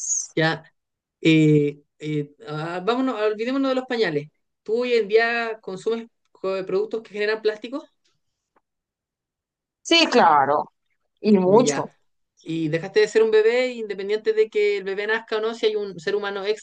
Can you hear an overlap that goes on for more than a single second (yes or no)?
no